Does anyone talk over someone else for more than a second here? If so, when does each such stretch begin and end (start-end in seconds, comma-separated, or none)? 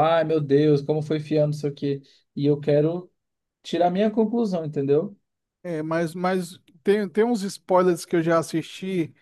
none